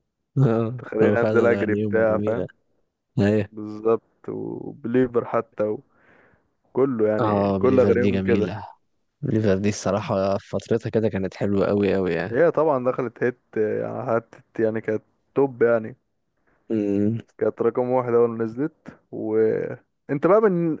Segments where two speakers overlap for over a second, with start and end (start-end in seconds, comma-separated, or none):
0.8-2.5, 7.2-8.5